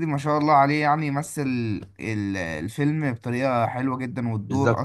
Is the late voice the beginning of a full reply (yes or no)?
yes